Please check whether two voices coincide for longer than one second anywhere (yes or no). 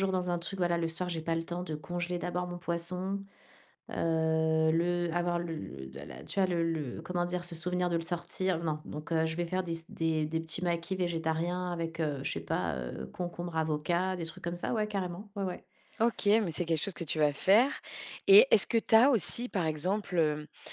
no